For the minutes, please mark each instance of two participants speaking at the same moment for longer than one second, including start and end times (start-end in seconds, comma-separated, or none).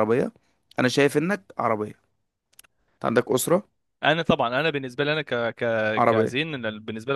none